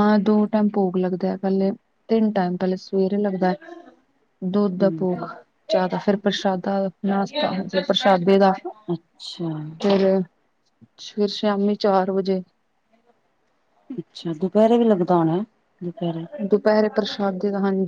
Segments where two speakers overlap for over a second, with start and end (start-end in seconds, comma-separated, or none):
none